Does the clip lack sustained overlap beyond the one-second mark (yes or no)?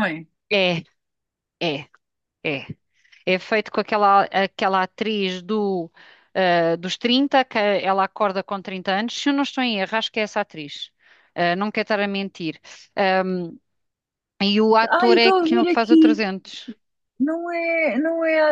no